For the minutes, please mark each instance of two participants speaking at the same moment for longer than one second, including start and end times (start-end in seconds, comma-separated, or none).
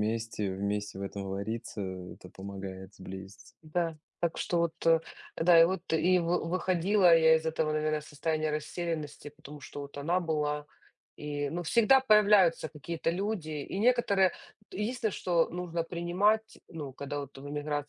none